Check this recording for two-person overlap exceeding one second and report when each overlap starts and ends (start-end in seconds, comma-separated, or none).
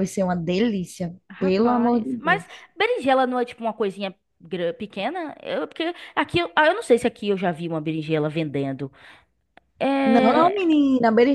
1.3-2.6